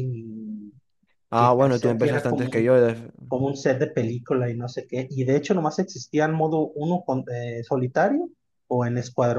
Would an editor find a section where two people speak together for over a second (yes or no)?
yes